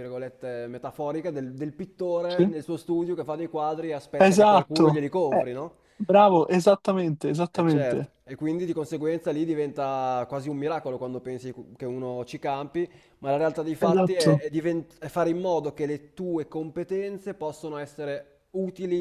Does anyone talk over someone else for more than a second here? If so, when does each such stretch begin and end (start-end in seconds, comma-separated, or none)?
4.2-5.5